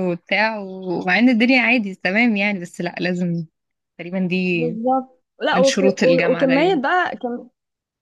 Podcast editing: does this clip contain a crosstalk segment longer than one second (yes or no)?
yes